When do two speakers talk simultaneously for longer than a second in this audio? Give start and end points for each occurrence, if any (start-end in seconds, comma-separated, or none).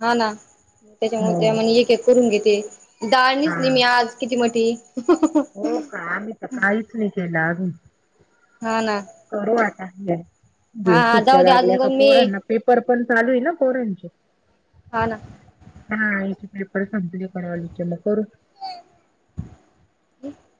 10.9-12.2